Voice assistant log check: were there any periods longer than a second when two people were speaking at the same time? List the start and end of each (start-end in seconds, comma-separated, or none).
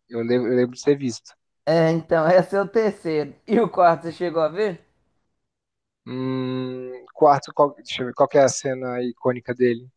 none